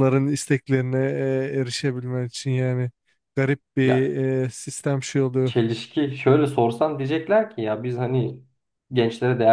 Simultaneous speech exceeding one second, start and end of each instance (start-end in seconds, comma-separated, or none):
none